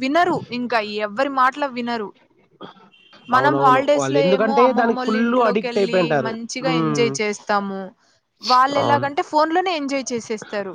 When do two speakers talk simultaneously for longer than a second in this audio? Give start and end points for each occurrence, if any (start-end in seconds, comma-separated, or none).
3.4-7.1